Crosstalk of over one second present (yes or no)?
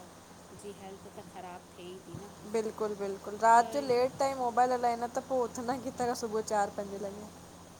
no